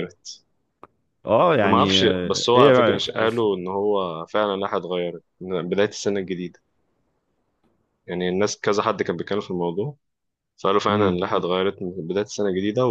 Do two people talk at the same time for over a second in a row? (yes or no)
yes